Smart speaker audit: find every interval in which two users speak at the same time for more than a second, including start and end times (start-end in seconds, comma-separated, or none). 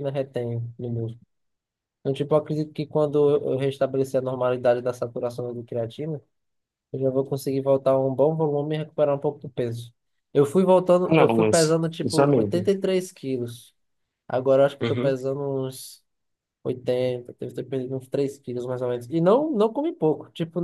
11.0-12.7